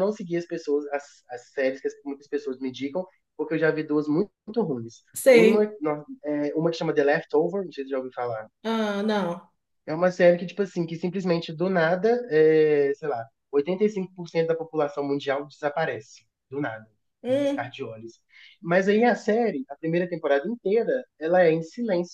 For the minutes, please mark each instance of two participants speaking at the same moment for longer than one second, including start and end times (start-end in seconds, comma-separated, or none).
none